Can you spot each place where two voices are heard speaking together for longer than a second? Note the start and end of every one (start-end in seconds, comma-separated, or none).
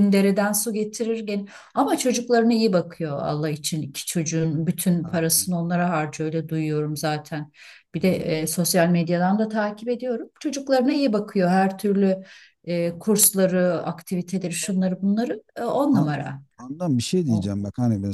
none